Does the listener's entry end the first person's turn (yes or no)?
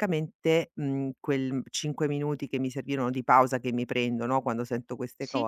no